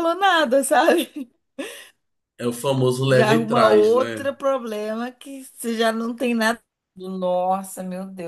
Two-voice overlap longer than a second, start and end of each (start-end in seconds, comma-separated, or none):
3.0-4.3